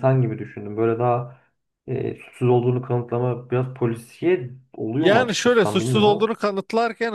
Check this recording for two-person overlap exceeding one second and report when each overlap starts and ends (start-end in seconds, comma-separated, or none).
5.0-6.3